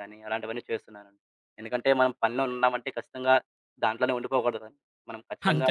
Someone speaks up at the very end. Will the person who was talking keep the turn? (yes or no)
yes